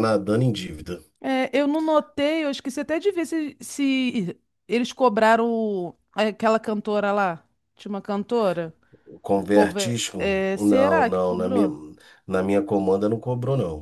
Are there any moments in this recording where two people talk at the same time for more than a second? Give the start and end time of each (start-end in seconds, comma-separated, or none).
9.3-11.7